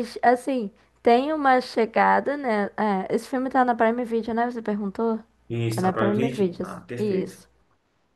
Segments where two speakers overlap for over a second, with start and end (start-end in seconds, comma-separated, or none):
5.7-7.4